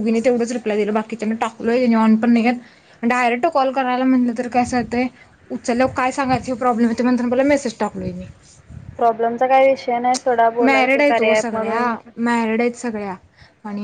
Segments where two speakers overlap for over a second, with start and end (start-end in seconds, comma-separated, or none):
10.7-11.9